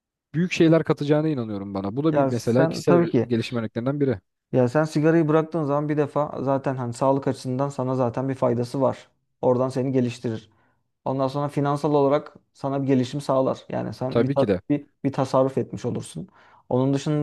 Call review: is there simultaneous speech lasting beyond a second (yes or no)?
yes